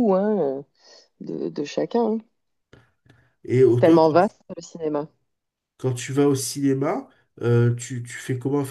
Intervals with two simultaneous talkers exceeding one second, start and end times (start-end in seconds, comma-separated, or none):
none